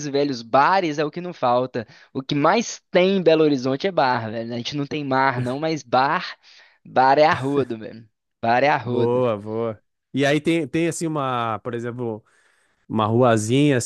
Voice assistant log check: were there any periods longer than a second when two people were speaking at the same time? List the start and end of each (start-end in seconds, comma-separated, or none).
none